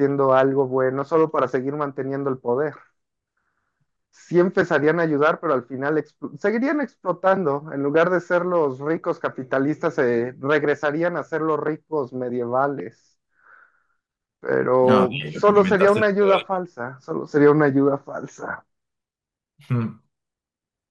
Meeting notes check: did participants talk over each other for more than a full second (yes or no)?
yes